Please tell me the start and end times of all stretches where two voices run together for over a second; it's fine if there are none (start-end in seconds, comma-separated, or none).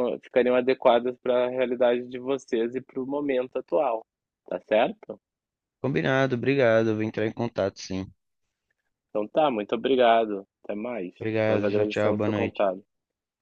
11.2-12.7